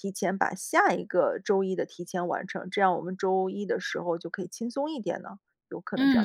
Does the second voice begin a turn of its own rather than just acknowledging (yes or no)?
yes